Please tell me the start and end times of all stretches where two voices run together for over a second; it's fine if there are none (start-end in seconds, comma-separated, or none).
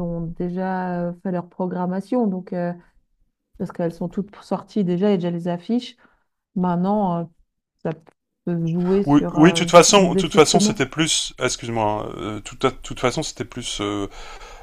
9.1-10.8